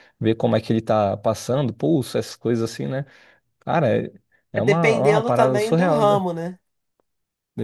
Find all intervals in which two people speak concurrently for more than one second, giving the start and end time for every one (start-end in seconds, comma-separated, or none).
4.6-6.2